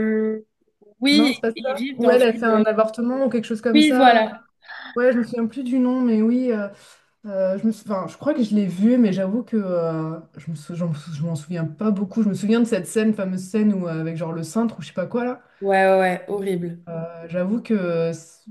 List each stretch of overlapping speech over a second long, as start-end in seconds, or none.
1.1-2.5